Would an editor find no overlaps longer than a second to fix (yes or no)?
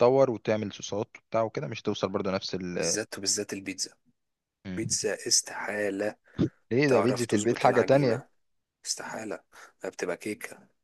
no